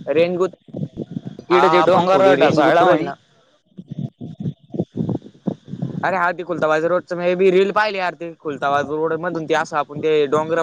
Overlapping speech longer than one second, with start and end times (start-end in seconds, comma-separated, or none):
1.5-3.1